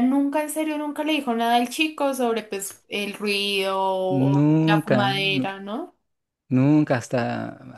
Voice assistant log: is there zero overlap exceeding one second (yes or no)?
no